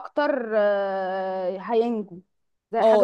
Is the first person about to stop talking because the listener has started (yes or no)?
yes